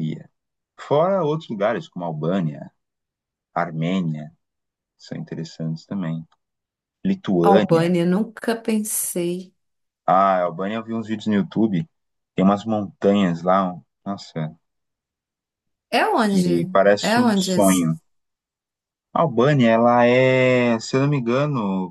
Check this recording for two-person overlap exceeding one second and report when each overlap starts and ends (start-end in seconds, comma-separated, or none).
16.2-17.8